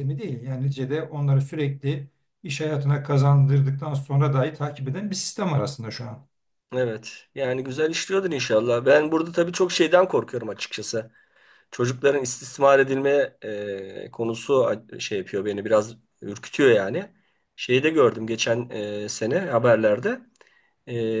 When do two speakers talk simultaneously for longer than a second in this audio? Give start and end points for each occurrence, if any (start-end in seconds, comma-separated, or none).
none